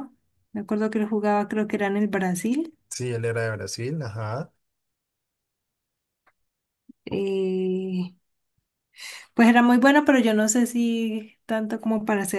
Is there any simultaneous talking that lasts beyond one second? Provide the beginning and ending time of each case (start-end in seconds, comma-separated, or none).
none